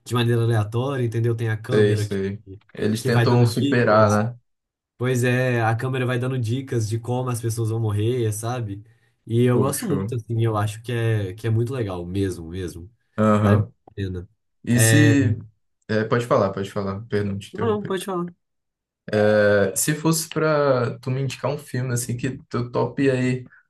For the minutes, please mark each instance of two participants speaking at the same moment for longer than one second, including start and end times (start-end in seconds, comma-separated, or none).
3.0-4.2